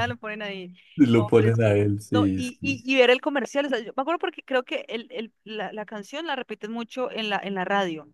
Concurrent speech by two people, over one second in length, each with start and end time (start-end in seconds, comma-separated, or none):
1.1-2.7